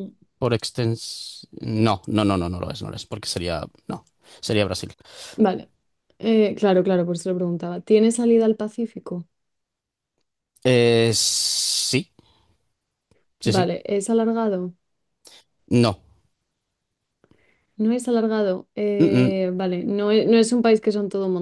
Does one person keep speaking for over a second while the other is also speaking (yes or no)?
no